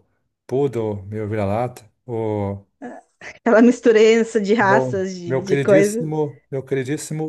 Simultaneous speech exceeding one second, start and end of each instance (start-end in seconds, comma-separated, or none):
4.6-6.1